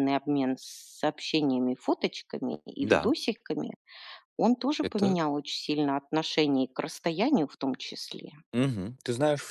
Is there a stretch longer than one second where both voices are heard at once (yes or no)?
no